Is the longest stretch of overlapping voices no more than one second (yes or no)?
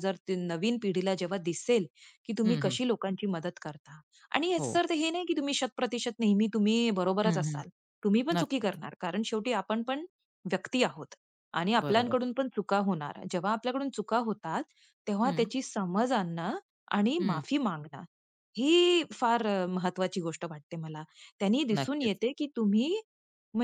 yes